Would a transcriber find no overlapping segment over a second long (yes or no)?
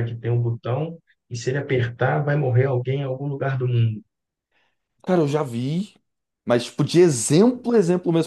yes